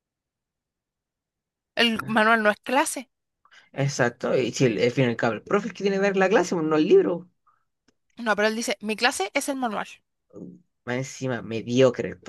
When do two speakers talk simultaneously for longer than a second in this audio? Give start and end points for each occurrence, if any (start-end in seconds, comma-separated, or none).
none